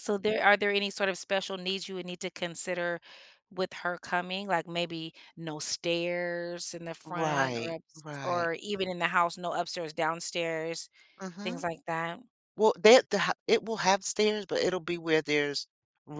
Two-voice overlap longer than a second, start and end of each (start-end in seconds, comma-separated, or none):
7.0-8.5